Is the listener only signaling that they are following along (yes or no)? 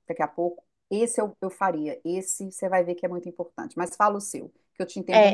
no